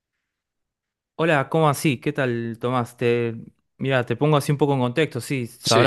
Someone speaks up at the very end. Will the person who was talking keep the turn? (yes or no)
yes